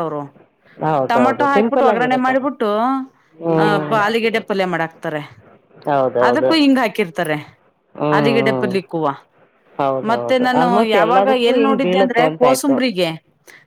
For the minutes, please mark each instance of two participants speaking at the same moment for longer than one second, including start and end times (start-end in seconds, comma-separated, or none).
1.1-2.5, 10.1-12.8